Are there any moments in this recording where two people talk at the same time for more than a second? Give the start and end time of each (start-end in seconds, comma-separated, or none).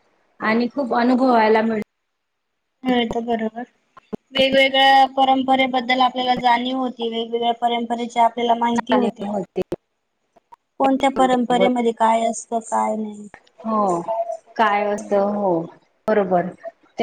none